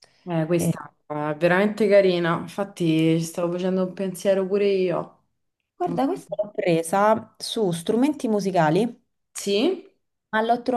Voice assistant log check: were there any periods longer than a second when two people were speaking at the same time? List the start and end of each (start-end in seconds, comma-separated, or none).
none